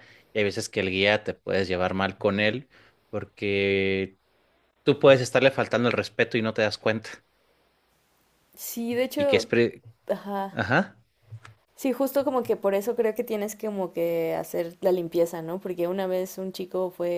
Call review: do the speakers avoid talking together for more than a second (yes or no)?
yes